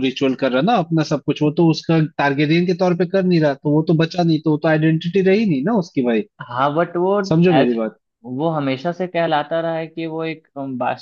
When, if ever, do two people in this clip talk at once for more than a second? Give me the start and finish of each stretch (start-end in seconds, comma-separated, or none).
none